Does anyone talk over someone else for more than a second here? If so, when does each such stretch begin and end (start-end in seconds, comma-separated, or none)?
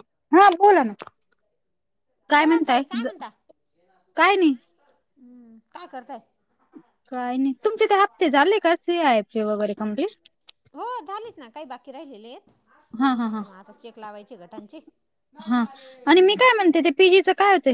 none